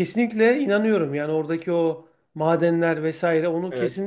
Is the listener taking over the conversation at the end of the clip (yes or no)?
no